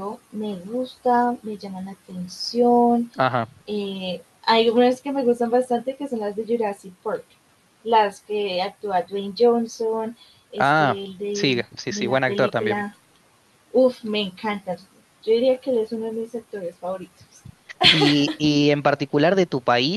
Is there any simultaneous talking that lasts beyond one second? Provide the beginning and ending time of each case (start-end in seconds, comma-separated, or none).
10.6-12.9